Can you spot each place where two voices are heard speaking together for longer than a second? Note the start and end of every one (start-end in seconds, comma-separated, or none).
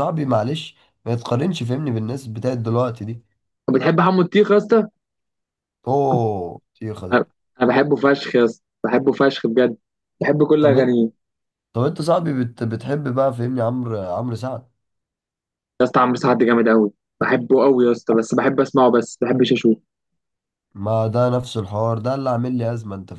none